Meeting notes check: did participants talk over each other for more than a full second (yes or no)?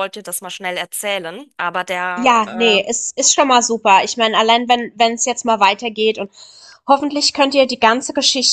no